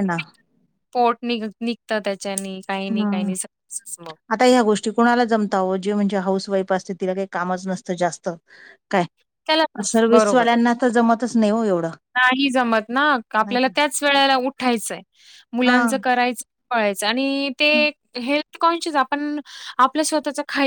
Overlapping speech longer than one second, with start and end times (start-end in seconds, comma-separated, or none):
none